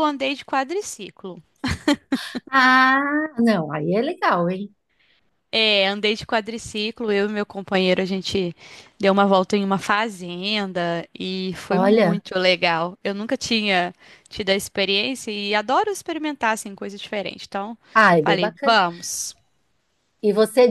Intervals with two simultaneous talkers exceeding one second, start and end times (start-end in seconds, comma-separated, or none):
none